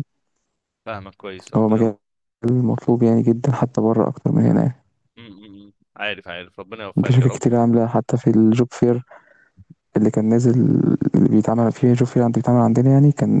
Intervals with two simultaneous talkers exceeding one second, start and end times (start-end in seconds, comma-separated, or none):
none